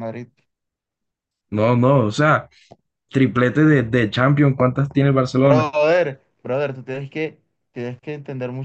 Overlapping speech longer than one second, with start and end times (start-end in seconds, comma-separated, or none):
none